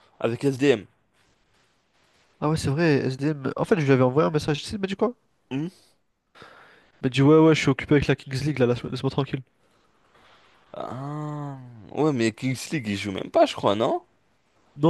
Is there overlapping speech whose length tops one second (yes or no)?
no